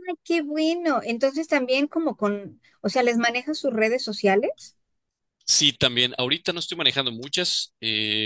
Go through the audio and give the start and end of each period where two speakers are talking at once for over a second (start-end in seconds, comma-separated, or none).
none